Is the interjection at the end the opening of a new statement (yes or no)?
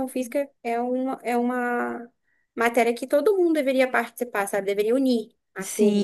yes